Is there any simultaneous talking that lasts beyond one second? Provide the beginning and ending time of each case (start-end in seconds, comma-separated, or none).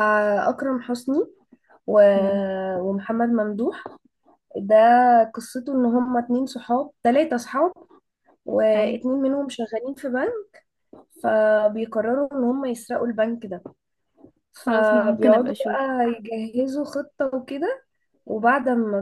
14.7-15.9